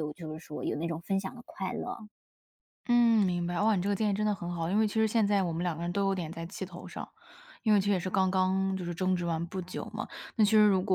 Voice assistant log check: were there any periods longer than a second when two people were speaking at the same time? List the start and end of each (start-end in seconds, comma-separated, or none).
none